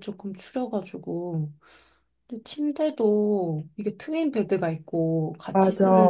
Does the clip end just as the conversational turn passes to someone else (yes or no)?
no